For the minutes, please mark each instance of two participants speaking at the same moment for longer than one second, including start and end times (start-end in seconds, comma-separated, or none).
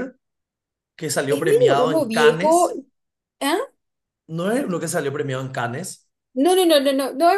1.3-2.7